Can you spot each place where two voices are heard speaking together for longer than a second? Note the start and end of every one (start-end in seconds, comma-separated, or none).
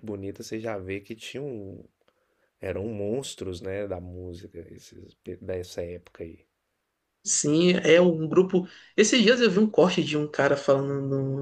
none